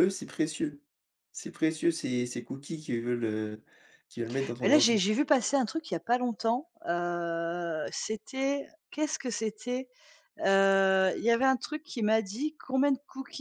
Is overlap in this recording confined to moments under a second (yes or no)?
yes